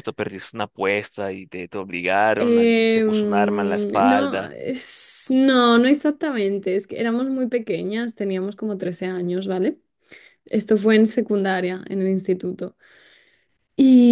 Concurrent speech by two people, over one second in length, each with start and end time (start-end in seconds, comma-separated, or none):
2.4-4.5